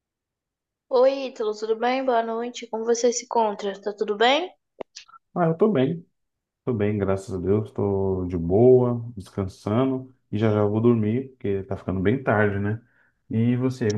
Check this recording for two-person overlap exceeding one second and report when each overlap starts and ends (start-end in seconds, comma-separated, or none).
none